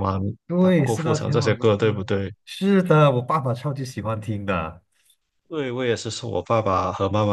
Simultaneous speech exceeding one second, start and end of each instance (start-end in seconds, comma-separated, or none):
0.6-2.3